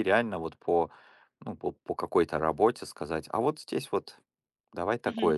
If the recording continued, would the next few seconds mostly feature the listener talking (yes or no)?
yes